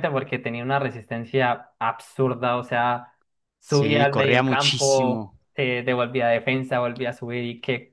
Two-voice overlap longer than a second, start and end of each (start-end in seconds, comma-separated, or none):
3.6-5.4